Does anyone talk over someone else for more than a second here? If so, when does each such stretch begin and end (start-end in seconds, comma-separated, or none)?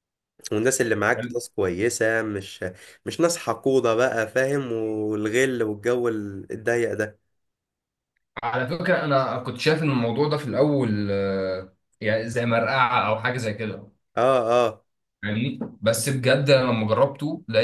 none